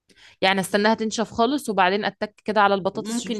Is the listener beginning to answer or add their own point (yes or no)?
yes